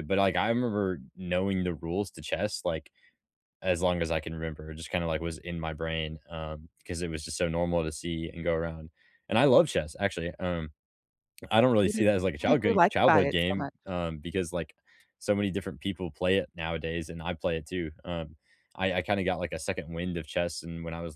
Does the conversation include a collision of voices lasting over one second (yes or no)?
yes